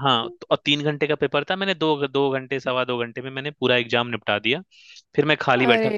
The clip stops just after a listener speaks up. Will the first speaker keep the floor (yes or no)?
yes